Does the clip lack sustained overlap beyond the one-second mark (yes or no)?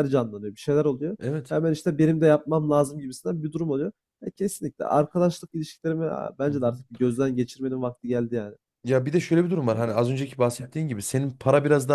yes